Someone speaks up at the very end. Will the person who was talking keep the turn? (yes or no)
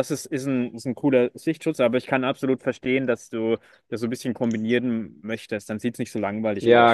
no